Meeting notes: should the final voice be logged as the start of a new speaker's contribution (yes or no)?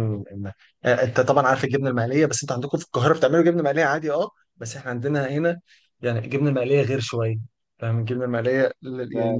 no